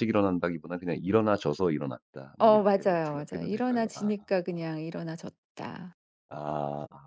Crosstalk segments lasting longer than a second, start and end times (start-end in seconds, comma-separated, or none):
2.4-4.1